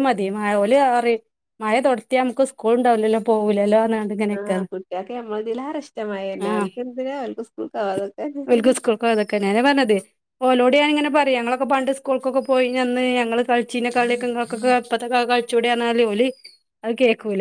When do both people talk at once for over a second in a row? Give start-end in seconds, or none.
none